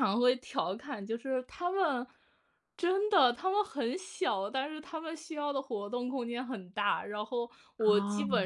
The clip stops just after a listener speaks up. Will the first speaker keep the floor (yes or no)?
yes